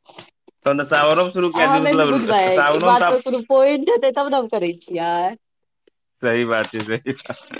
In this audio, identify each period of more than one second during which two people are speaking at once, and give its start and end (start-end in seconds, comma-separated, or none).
1.6-3.2